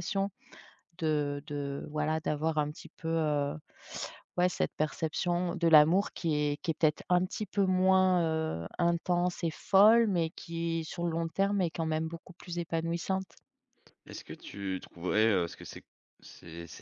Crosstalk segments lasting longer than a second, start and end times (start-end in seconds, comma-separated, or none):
none